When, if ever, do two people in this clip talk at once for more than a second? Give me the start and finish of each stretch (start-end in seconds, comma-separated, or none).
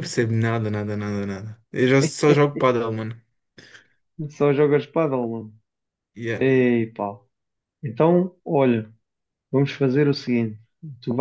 none